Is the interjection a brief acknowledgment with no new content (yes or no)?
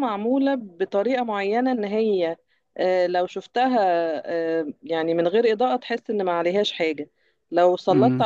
yes